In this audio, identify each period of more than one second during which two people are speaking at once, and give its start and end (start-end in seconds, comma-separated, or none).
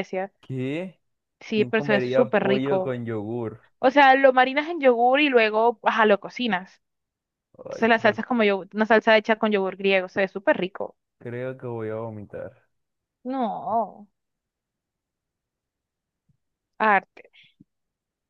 1.5-3.0